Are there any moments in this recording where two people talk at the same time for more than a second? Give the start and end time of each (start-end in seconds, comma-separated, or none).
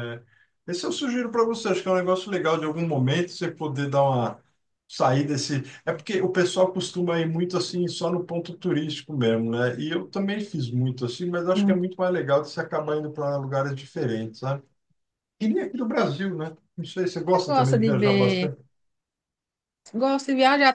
17.3-18.5